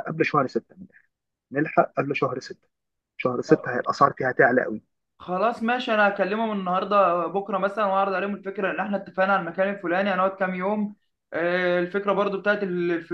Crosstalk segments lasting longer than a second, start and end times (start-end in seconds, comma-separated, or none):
none